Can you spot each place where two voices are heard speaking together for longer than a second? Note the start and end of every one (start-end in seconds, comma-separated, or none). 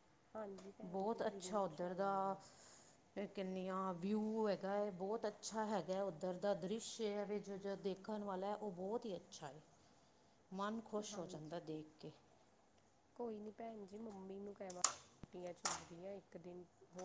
0.9-2.4